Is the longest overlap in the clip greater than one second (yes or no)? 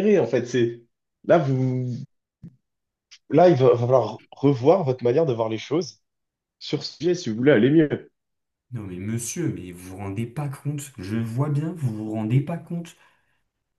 no